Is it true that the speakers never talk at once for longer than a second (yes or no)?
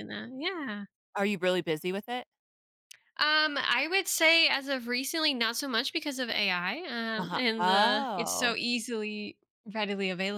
no